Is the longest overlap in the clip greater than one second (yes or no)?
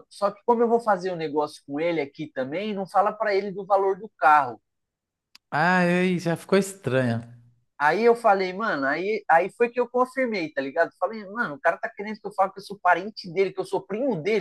no